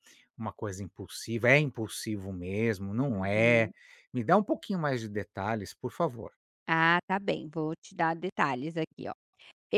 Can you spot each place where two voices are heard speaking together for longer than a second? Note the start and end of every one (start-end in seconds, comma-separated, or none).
none